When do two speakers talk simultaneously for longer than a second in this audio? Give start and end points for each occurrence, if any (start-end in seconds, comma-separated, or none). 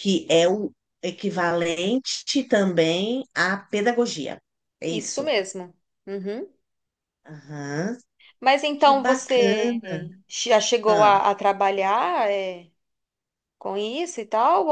8.8-10.0